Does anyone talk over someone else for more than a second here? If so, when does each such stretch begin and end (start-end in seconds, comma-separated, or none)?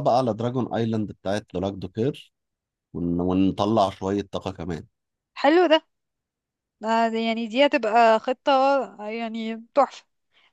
none